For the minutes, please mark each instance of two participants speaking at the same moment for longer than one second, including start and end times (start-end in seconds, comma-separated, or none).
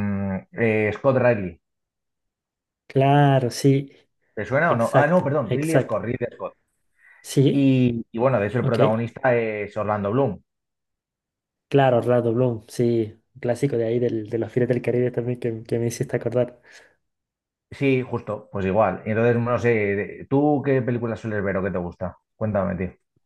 4.7-6.0